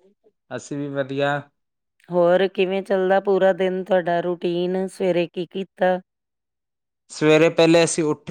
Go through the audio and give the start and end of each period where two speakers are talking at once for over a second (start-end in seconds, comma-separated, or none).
none